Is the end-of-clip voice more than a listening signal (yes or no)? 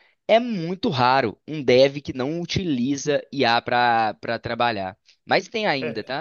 no